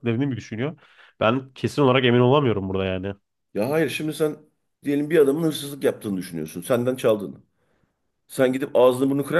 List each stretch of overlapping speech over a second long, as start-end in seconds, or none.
none